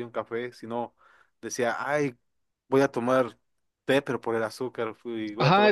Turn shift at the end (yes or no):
yes